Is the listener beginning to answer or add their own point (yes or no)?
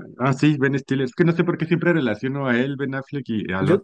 no